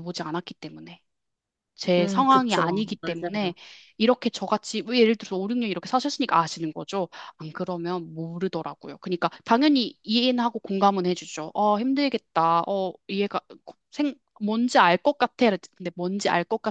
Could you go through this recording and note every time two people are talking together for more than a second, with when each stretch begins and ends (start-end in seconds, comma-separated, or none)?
2.0-3.5